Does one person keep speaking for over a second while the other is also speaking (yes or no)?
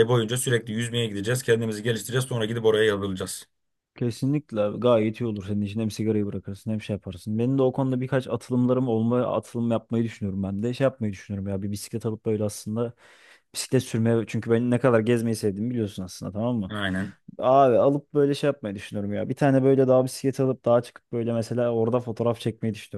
no